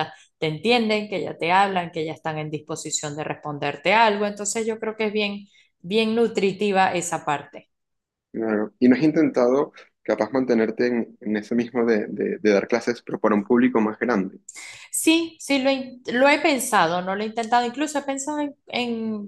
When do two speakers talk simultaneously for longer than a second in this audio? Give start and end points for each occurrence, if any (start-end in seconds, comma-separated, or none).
none